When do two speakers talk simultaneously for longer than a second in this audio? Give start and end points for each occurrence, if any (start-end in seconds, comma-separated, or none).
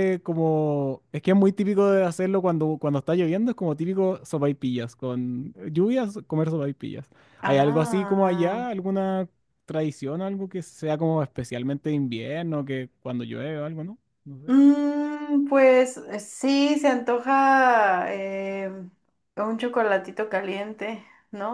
7.4-8.7